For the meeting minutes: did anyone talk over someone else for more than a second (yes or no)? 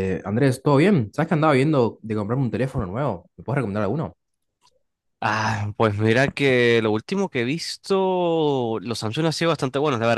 no